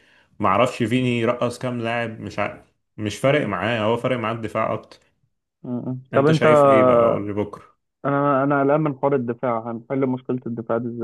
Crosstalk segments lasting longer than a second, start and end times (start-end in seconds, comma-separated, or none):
none